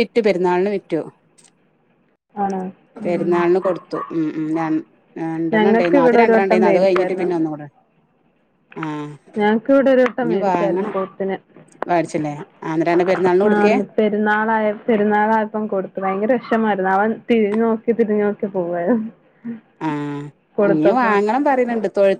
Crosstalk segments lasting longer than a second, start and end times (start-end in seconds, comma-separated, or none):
5.5-7.3